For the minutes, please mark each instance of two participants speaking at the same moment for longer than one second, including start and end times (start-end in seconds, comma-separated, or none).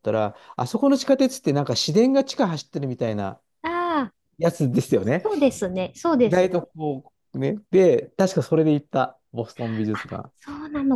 none